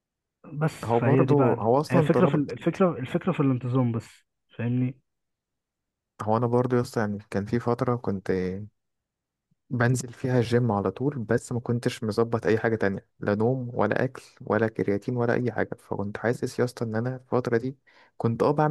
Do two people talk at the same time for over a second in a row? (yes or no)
yes